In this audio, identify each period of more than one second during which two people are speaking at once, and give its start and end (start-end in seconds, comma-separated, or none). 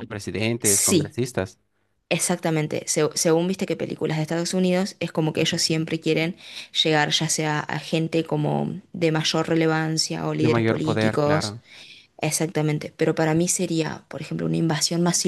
10.4-11.6